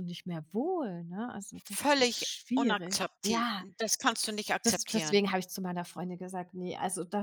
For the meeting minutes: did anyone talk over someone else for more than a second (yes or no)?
yes